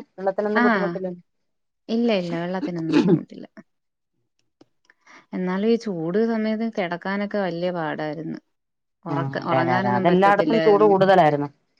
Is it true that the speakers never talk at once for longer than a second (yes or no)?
no